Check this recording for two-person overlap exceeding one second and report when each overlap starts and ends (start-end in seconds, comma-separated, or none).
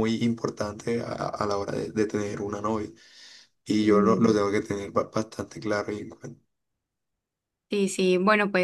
none